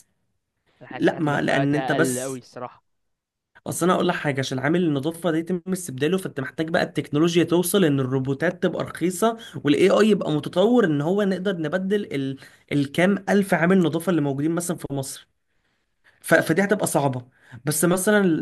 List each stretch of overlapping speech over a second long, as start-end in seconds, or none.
0.9-2.4